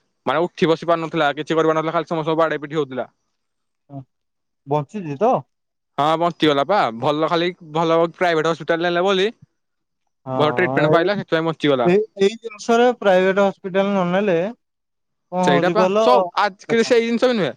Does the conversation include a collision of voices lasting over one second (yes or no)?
yes